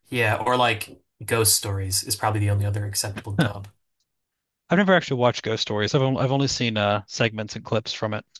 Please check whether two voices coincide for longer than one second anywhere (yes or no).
no